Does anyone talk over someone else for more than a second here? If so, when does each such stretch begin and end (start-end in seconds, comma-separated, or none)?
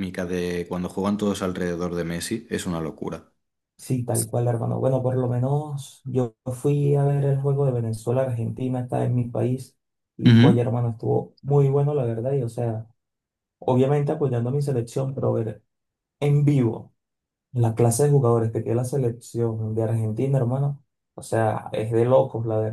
none